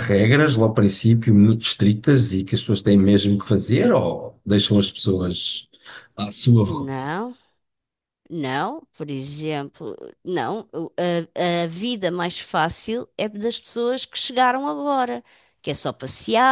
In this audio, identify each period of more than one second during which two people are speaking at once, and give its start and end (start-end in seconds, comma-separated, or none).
none